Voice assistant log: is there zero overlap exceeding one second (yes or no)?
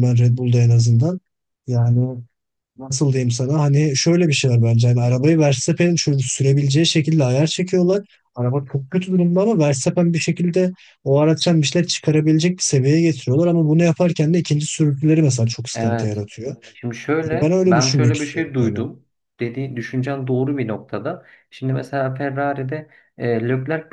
no